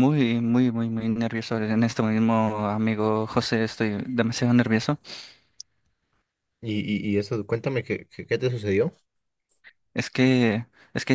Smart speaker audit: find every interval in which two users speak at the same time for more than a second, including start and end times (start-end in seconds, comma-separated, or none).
none